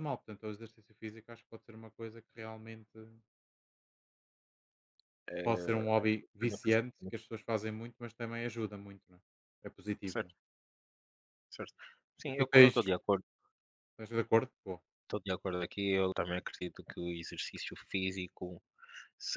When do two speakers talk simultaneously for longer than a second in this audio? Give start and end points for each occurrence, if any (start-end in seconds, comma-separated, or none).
5.4-7.1